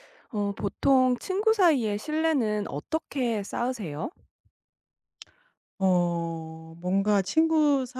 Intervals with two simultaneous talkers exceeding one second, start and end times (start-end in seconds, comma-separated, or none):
none